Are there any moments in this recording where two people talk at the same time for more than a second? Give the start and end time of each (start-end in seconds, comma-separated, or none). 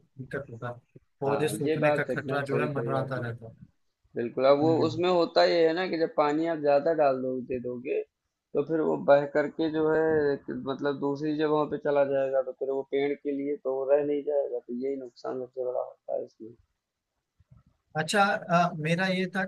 1.3-3.2